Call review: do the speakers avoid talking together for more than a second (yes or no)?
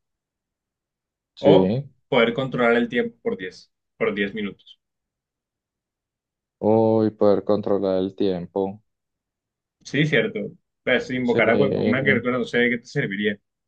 yes